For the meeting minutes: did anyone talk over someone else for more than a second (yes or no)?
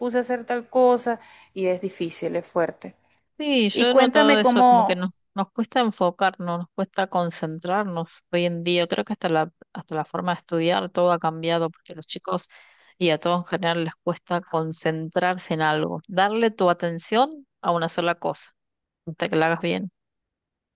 yes